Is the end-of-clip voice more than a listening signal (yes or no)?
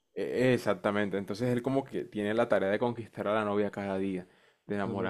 no